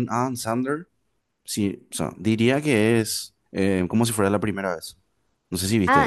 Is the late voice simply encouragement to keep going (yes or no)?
no